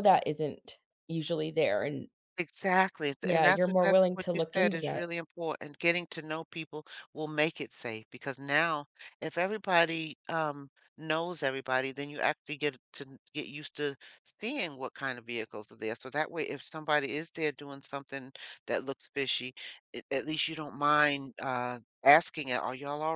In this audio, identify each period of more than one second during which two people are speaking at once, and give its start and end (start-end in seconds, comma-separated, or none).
3.2-5.1